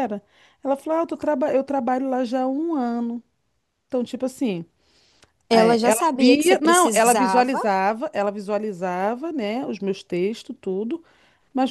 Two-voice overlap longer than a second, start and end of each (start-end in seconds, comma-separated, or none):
5.5-7.5